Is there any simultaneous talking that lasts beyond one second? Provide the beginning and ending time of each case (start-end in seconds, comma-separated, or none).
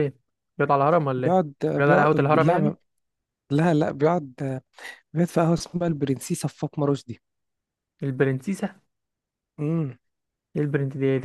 1.2-2.8